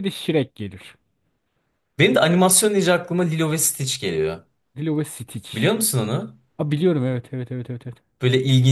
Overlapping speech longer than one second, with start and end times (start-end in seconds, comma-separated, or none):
none